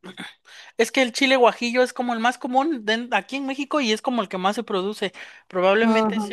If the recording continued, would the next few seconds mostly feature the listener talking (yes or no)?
no